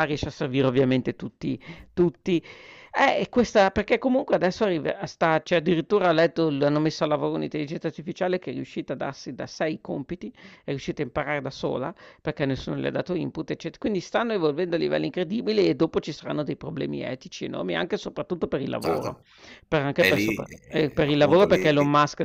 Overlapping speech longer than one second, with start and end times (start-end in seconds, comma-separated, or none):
20.0-21.8